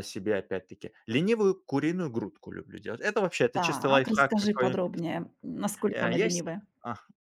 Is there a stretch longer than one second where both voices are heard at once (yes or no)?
yes